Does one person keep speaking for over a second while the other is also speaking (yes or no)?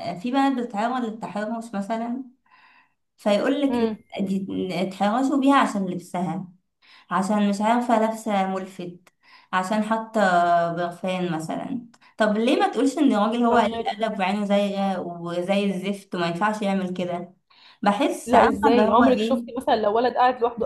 yes